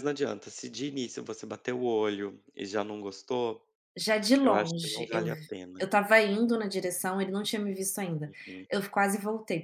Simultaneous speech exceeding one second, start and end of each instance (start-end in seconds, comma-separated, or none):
4.4-5.9